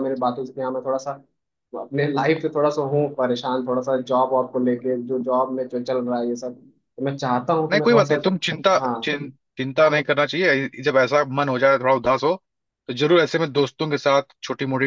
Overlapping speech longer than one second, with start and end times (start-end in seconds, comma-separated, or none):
none